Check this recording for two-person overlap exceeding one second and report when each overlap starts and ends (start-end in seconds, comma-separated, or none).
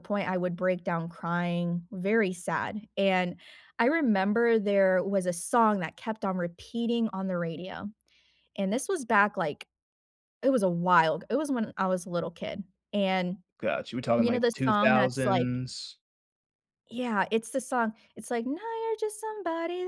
14.2-15.5